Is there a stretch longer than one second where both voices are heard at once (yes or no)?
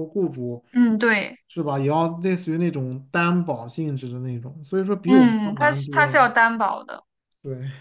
yes